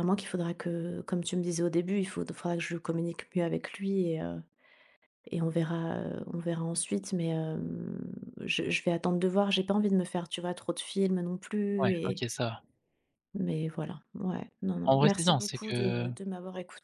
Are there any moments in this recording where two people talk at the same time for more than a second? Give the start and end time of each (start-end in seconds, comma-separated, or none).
14.8-16.1